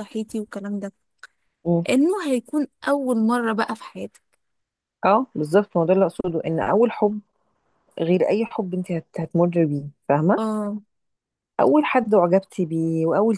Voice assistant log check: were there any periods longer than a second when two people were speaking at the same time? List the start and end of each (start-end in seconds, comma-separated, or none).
none